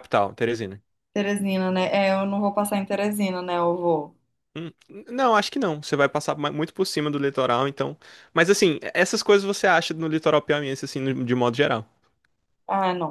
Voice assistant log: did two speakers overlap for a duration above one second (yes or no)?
no